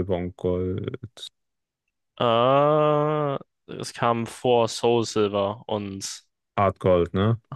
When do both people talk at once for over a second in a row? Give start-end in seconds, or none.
none